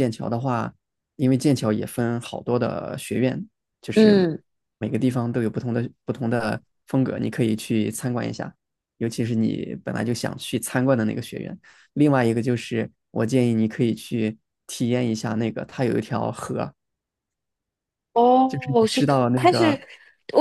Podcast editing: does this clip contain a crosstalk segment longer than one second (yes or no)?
yes